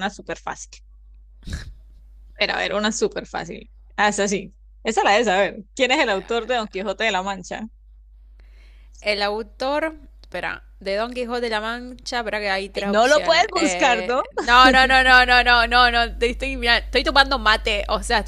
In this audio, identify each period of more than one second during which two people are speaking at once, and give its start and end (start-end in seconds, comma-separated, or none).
12.7-14.2